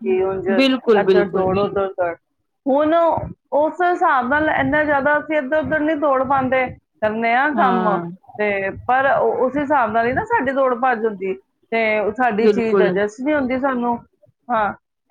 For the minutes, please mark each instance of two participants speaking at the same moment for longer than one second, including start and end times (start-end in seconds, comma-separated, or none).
none